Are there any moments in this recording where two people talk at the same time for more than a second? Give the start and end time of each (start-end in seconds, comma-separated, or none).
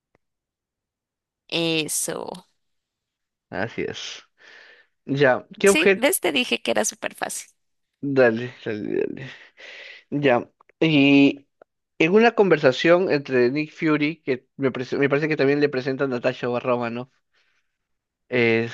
none